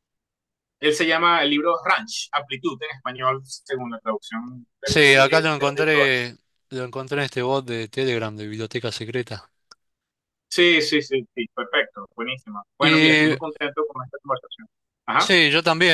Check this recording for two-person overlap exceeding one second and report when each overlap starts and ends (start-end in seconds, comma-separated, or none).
4.8-6.1